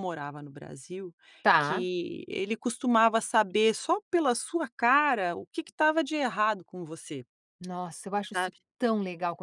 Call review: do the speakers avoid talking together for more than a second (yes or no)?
yes